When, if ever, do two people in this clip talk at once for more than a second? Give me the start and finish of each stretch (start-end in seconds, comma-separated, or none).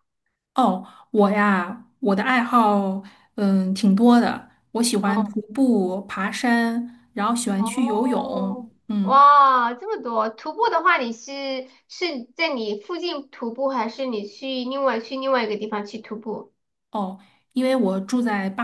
7.5-9.2